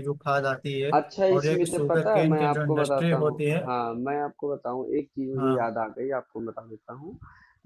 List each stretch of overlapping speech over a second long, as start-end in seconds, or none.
1.4-3.6